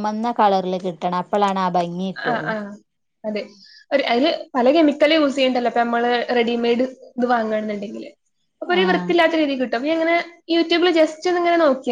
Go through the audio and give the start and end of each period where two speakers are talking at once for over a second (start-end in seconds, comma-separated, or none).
none